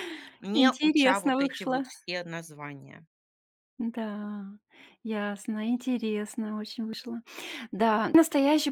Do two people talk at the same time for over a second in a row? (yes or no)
yes